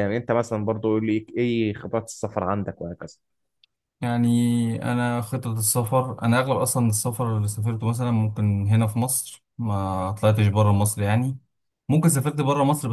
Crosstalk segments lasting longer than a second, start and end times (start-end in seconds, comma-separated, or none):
none